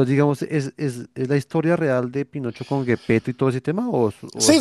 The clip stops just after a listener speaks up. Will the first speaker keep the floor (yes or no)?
no